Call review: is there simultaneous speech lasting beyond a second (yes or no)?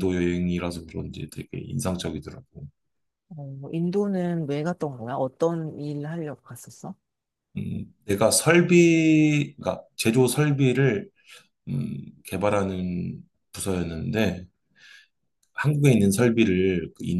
no